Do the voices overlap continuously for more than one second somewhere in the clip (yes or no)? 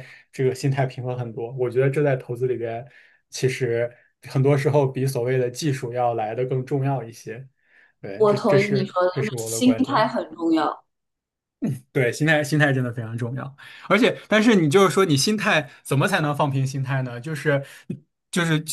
yes